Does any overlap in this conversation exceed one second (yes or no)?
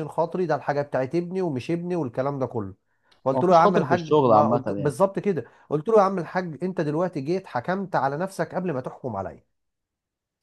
yes